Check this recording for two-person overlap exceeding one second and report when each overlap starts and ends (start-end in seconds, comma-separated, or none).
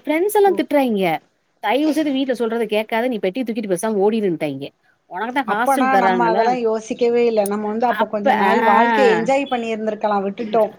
none